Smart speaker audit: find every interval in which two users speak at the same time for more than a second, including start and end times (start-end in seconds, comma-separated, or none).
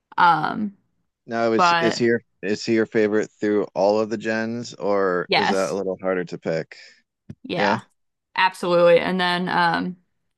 none